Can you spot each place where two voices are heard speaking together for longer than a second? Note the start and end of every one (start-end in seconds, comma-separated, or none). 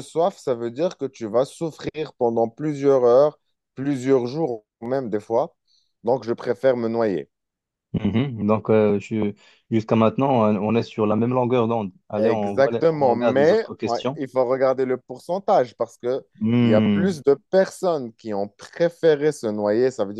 12.2-14.2